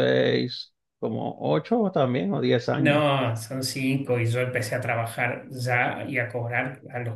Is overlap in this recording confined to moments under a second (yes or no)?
yes